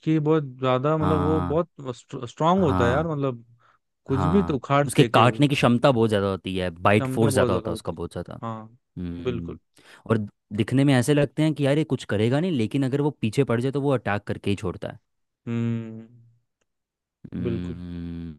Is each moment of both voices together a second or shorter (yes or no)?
no